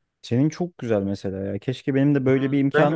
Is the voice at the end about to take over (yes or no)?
yes